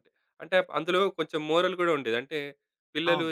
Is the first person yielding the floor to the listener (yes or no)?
no